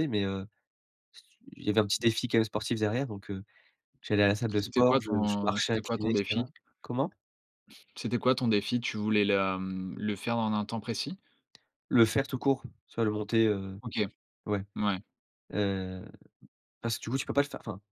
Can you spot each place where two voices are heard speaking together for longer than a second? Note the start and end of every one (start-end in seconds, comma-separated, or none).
4.5-6.4